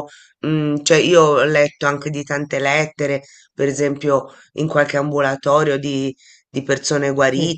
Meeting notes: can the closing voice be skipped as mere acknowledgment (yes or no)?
yes